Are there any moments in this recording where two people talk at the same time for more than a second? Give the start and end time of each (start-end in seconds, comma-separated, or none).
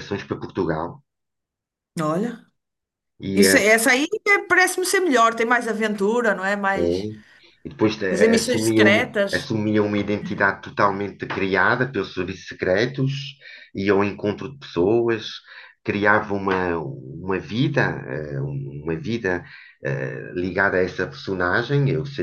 8.1-9.5